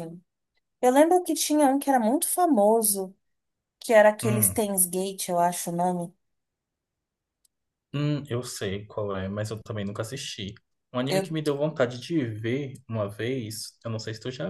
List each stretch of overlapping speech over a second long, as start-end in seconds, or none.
none